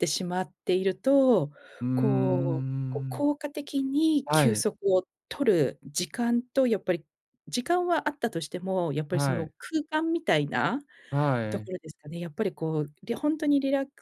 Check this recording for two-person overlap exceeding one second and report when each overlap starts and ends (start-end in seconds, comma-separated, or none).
1.9-3.3